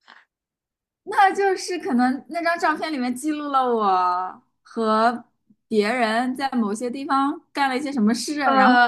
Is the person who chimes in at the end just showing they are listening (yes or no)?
no